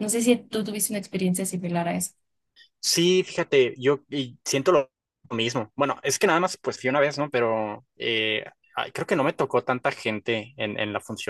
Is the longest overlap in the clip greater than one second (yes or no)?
no